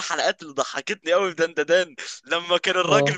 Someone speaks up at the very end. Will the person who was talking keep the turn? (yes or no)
yes